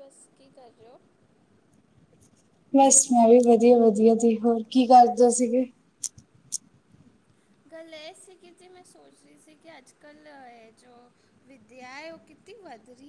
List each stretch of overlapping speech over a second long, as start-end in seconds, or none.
none